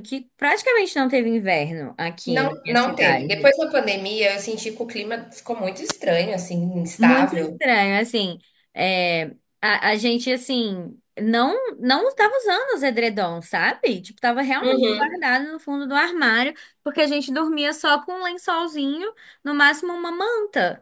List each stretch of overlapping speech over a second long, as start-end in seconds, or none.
2.3-3.5